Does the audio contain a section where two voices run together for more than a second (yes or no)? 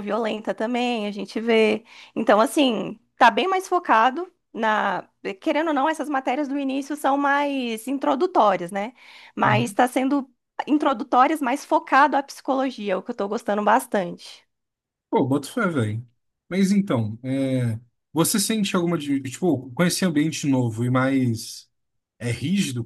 no